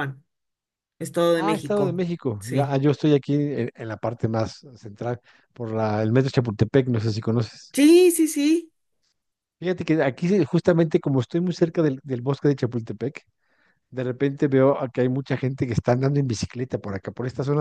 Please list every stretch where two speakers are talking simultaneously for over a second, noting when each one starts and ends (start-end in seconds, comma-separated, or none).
1.3-2.8